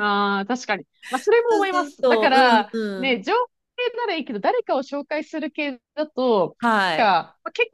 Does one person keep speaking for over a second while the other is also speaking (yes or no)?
yes